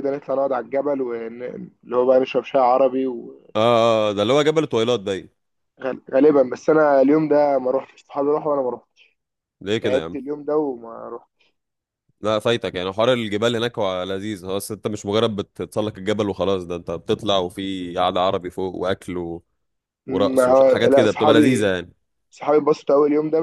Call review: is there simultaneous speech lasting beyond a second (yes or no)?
yes